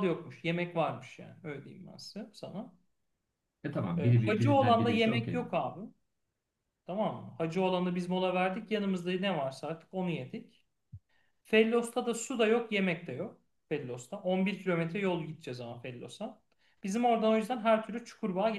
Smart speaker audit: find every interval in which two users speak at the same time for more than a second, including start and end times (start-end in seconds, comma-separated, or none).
4.0-5.4